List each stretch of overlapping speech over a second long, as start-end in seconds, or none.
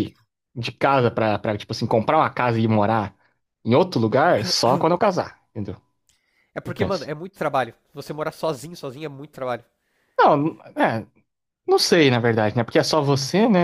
none